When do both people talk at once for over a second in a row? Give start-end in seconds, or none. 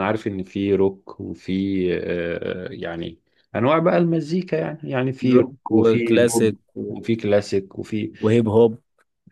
5.3-6.6